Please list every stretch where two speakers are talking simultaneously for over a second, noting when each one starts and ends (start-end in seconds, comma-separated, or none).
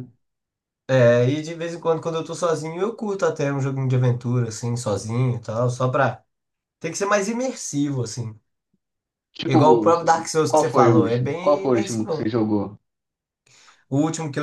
10.5-12.3